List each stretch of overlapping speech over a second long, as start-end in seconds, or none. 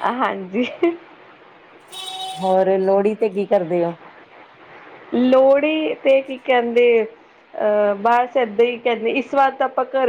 none